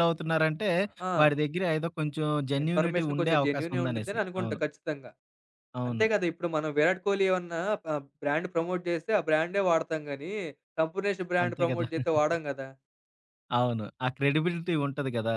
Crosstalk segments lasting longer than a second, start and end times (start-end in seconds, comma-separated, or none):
2.6-4.6